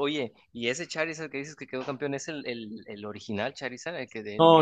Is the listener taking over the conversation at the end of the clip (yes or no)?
yes